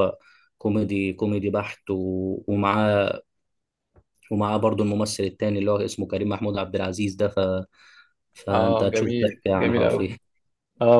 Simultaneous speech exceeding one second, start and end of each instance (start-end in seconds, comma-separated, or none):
8.5-10.2